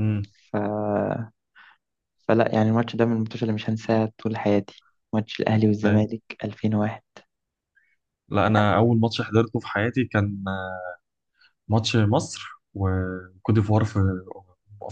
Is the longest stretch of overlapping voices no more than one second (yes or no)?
yes